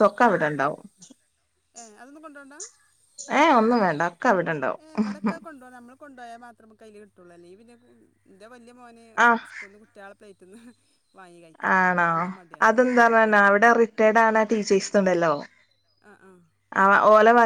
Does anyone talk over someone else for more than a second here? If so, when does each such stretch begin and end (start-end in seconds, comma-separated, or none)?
none